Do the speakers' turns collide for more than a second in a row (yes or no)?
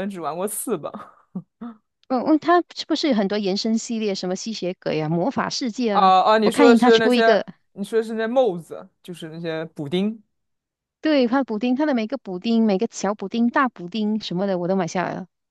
yes